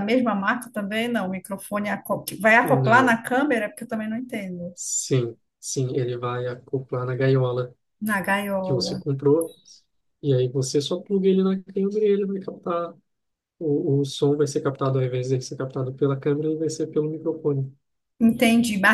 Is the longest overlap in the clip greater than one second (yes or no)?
no